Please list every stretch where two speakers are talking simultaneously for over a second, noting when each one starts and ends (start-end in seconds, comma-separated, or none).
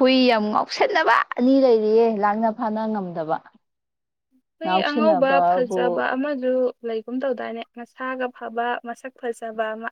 4.6-6.0